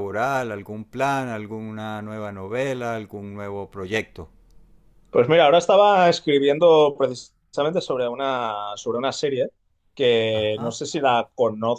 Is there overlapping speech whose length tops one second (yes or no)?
no